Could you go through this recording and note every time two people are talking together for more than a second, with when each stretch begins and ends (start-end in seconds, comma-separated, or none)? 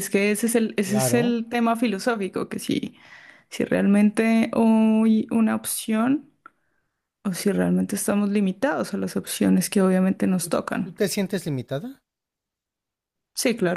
none